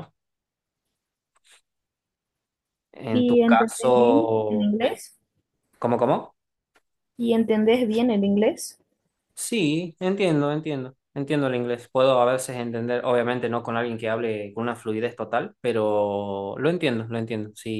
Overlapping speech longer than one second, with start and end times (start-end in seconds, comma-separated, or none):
3.1-5.0